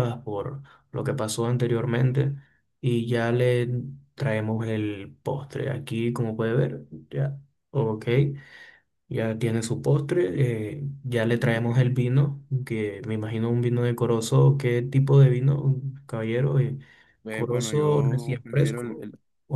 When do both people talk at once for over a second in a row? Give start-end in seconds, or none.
17.3-19.1